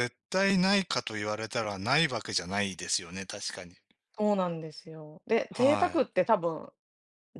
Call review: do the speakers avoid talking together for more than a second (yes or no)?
yes